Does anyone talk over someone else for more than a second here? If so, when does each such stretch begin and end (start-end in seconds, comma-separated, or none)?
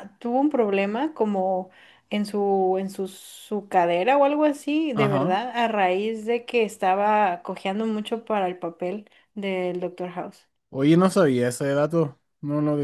none